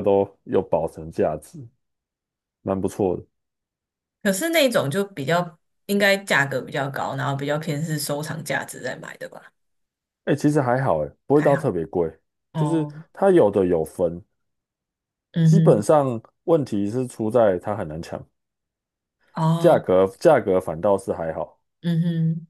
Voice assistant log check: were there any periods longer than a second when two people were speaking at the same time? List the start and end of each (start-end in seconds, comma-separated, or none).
none